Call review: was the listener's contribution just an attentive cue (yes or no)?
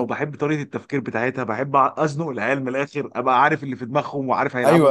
no